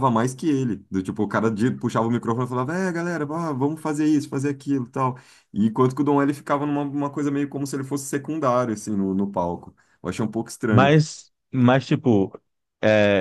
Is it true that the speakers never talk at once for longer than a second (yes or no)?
yes